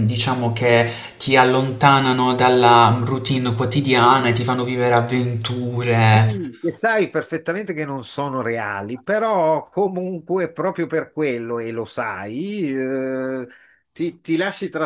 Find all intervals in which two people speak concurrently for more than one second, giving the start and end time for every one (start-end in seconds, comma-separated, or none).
none